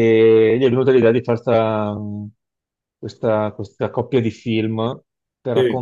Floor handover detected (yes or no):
no